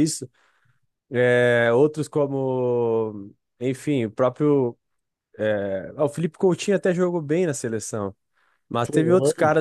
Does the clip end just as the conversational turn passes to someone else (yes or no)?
no